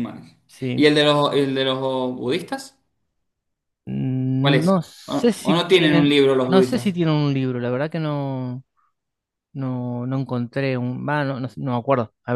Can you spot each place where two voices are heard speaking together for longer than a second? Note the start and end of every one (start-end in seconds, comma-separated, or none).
4.4-7.0